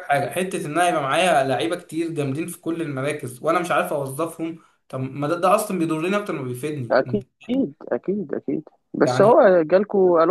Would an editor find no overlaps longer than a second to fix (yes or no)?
yes